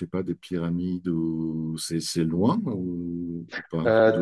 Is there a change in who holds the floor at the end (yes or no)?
yes